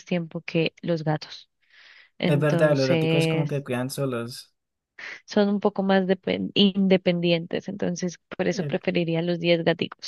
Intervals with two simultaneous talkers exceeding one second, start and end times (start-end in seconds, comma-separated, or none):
2.2-3.6